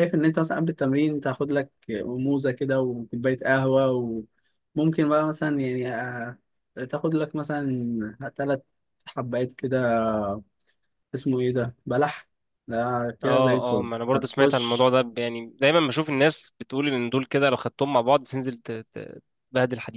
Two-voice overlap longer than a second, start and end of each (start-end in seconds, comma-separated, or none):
13.2-14.9